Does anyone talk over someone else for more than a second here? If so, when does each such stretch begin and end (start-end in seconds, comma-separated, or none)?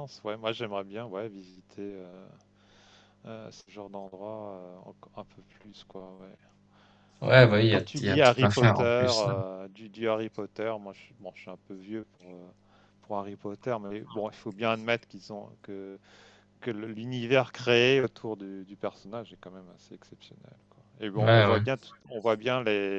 7.7-9.3